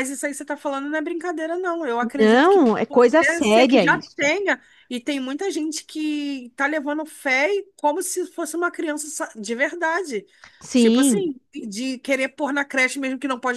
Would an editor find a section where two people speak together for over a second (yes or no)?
yes